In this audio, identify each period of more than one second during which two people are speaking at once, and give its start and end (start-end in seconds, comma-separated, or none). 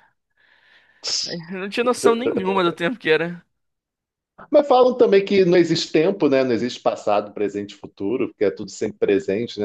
none